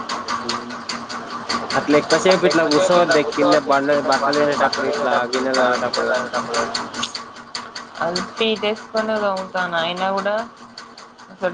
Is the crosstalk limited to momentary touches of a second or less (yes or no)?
no